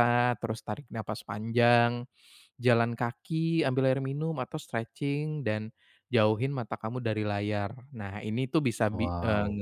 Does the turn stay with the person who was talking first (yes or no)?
yes